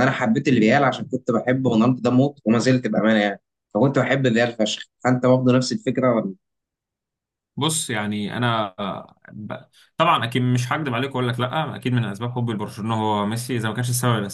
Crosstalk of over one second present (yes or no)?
no